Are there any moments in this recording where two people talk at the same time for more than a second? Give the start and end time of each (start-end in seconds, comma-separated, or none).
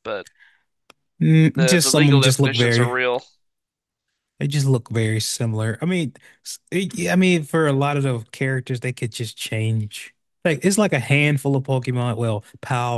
1.6-2.9